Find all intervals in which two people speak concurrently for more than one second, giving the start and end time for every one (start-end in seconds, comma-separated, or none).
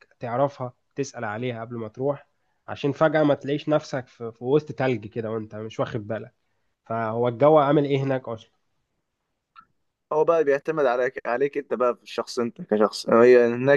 none